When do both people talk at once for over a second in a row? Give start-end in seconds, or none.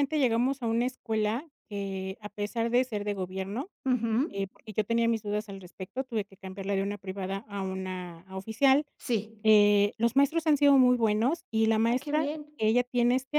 none